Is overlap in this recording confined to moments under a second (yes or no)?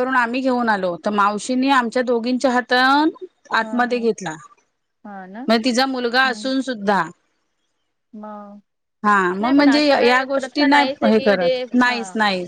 no